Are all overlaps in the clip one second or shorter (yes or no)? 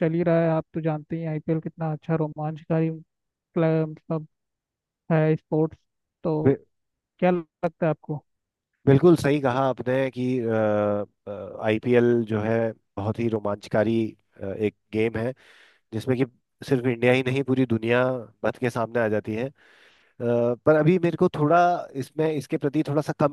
yes